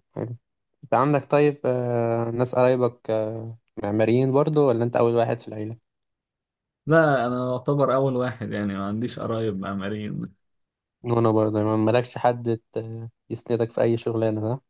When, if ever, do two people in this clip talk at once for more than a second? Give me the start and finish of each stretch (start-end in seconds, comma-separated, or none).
none